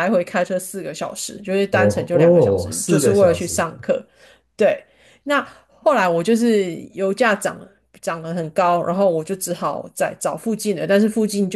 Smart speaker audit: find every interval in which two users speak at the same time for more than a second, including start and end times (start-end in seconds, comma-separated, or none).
1.7-3.6